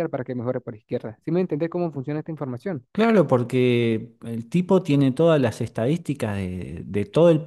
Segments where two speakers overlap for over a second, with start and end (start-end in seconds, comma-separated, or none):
none